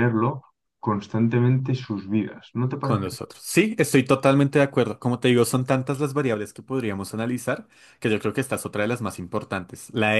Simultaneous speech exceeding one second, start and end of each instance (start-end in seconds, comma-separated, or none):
none